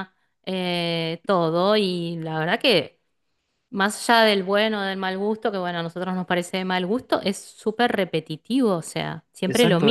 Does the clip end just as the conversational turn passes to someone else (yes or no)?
yes